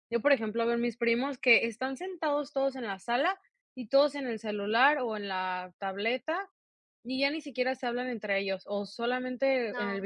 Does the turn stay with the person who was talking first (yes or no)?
yes